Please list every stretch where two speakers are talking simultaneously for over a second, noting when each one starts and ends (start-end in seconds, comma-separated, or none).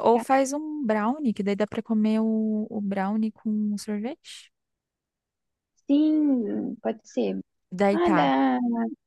none